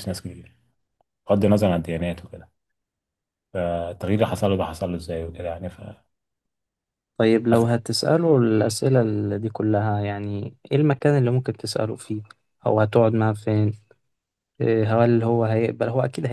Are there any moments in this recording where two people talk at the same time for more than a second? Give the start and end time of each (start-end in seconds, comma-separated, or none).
none